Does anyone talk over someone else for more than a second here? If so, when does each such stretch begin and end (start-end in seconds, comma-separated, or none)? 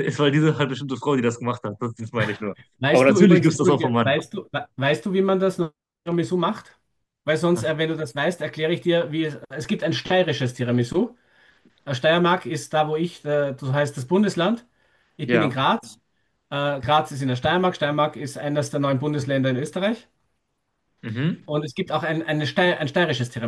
2.9-4.2